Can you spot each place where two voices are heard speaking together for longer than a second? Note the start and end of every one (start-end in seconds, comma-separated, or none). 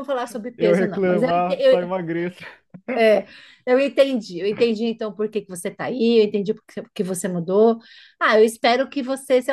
0.6-1.9